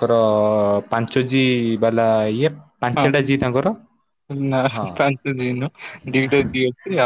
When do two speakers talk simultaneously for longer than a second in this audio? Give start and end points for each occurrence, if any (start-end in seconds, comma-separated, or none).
none